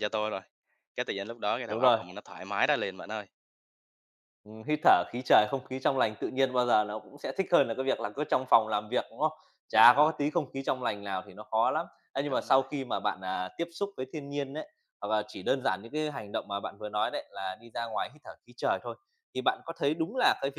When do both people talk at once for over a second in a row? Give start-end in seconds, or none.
none